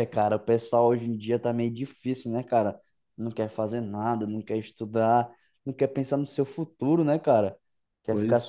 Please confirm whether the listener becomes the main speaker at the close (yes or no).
no